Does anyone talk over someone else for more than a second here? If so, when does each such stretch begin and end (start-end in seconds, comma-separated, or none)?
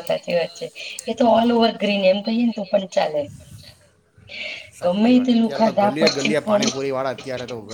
4.8-6.6